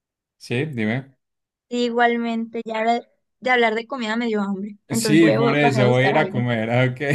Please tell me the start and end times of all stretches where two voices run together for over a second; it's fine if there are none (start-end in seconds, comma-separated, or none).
4.9-6.4